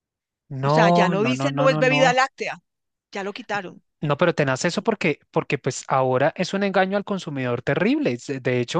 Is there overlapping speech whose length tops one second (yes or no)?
yes